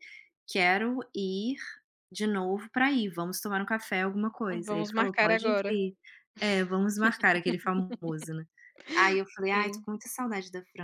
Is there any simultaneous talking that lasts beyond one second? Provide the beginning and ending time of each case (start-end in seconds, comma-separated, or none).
4.5-5.8